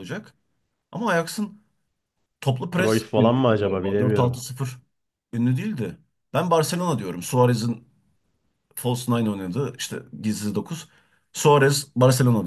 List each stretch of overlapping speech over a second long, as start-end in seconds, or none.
2.8-4.4